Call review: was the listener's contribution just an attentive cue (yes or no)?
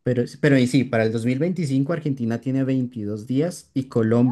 yes